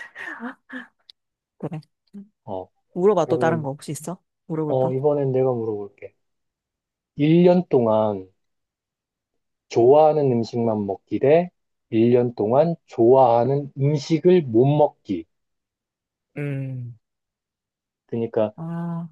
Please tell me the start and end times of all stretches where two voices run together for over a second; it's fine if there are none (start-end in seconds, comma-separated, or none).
none